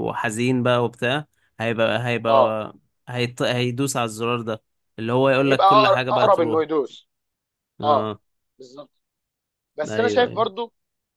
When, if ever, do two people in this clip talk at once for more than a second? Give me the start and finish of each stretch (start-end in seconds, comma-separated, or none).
5.3-6.7